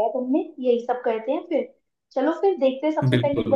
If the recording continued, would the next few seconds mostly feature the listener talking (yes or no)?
no